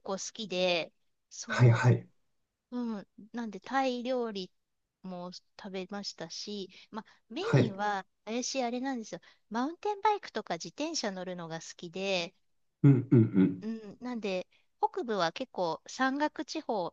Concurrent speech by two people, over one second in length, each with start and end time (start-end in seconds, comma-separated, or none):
none